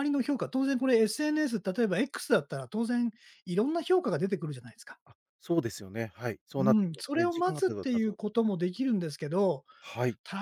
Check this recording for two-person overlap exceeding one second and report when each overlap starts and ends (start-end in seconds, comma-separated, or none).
6.6-8.3